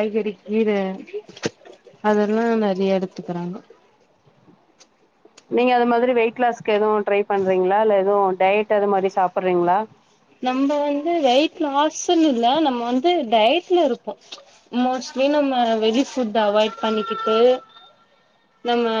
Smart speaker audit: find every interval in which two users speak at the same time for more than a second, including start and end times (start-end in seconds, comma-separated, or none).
none